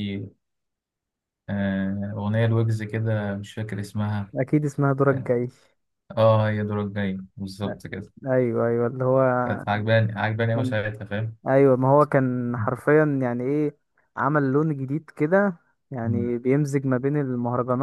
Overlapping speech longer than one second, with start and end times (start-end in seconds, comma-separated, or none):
none